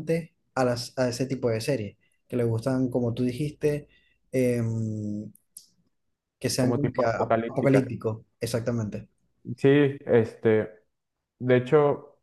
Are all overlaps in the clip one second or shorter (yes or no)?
no